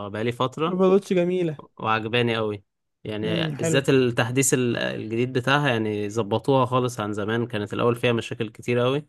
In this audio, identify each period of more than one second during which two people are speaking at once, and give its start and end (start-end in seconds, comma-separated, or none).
none